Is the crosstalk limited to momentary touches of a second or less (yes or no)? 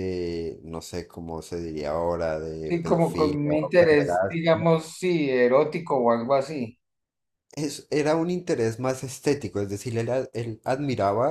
no